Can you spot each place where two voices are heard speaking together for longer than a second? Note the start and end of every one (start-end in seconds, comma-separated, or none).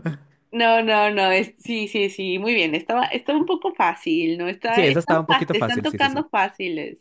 4.7-6.2